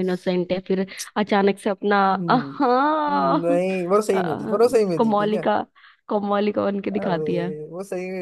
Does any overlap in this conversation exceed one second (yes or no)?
yes